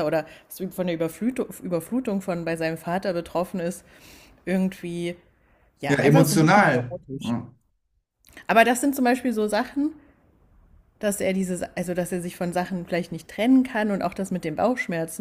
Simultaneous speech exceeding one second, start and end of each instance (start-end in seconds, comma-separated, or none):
5.9-7.4